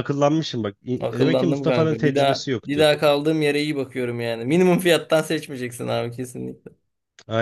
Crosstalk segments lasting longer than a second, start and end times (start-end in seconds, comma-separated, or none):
1.0-2.9